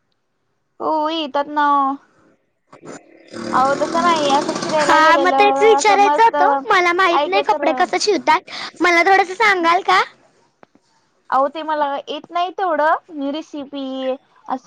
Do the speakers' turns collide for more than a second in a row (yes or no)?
yes